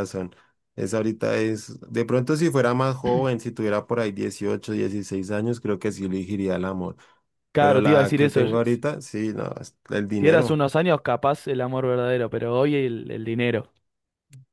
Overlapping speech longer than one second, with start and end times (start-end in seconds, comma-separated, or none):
7.6-8.8